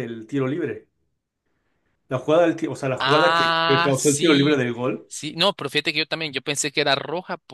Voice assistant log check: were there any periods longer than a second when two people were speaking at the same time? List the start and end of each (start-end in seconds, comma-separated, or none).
3.0-4.7